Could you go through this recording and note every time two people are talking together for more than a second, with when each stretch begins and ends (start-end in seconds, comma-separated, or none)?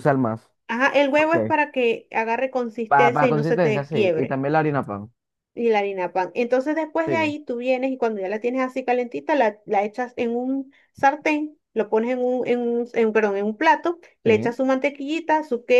2.9-4.4